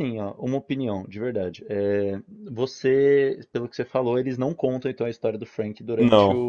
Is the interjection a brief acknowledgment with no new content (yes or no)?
yes